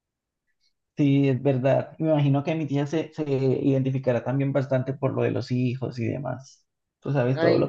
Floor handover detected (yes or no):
no